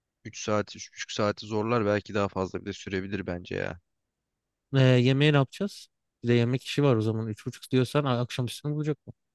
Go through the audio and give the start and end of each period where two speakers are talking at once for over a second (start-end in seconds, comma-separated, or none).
none